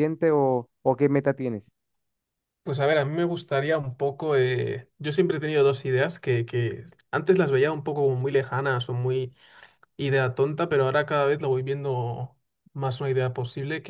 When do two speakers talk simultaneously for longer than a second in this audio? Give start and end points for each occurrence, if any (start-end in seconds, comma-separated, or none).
none